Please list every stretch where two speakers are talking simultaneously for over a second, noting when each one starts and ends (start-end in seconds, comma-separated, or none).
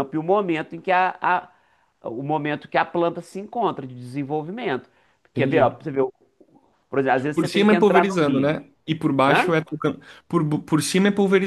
7.3-8.6